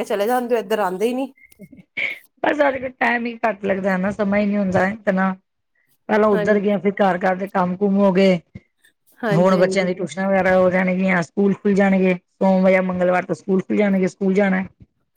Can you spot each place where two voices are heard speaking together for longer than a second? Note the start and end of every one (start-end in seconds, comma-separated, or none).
none